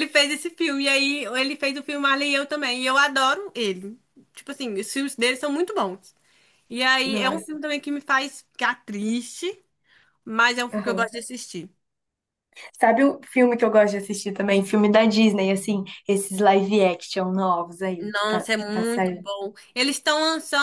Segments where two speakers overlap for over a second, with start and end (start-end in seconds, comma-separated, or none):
18.0-19.3